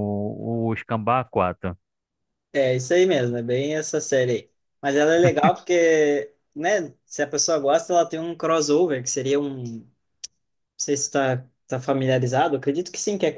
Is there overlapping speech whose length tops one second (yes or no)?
no